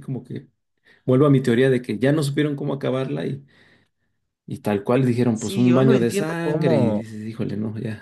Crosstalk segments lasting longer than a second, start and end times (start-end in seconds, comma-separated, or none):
5.3-7.0